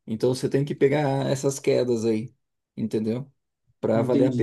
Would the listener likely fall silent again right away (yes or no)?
no